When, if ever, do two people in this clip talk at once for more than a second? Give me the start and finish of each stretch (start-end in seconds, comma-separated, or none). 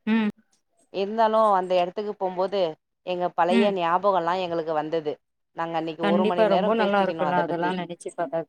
6.0-7.7